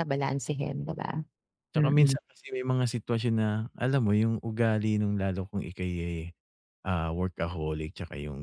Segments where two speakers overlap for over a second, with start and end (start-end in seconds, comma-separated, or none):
none